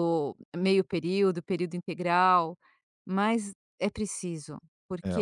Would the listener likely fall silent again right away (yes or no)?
yes